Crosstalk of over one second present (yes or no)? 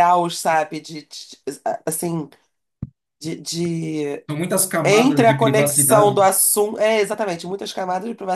yes